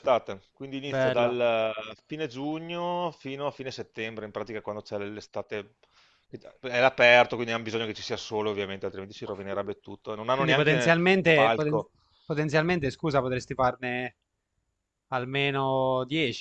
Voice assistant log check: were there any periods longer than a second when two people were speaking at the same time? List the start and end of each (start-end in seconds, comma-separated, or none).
10.3-11.8